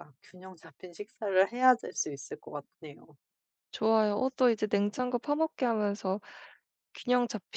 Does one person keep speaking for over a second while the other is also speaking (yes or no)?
no